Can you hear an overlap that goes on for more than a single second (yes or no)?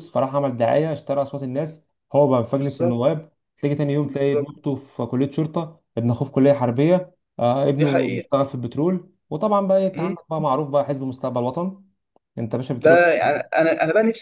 no